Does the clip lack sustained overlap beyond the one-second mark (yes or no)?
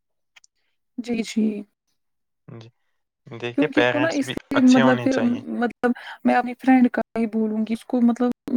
no